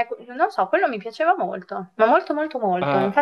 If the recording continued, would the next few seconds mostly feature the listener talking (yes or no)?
yes